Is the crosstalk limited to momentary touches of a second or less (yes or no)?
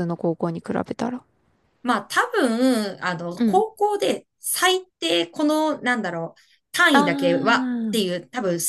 yes